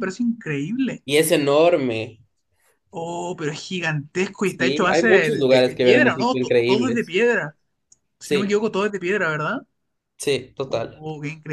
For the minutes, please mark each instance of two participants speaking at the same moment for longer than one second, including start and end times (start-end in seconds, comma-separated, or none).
4.4-7.2